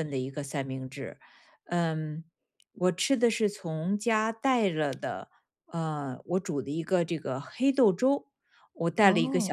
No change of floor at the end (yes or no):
yes